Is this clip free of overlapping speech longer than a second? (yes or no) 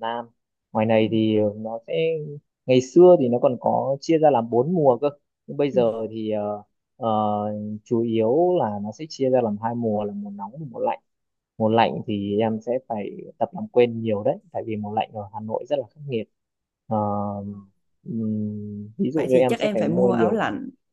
no